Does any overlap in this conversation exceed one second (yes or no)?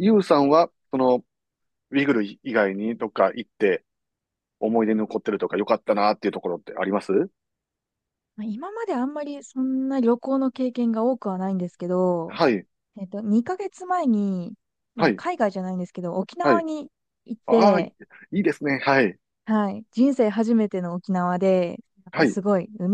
no